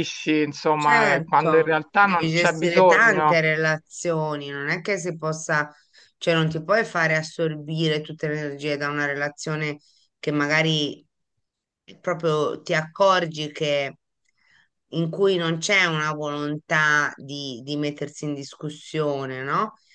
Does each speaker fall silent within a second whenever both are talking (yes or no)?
no